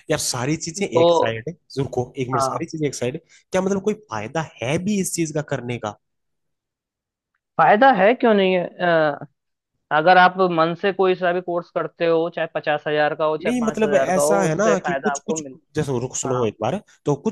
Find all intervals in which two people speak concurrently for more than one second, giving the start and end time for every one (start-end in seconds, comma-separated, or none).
13.4-15.6